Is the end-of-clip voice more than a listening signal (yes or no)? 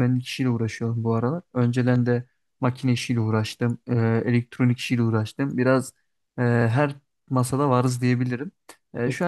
no